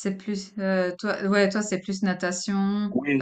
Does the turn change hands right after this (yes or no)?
yes